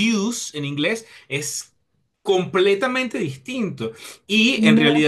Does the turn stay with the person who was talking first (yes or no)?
yes